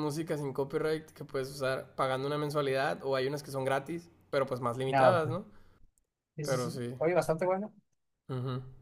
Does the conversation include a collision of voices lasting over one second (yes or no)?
no